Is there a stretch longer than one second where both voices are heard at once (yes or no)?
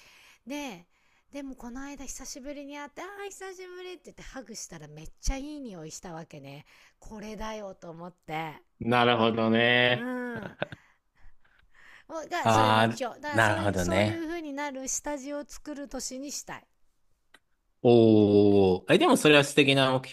yes